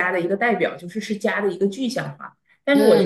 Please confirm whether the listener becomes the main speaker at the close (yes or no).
no